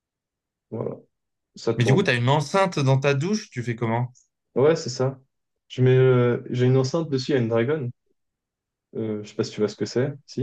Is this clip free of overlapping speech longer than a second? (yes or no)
yes